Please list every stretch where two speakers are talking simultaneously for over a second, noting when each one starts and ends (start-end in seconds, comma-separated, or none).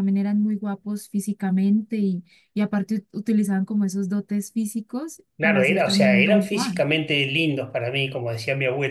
5.4-6.8